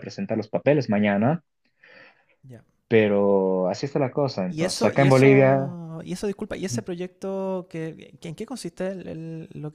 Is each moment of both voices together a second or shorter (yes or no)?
no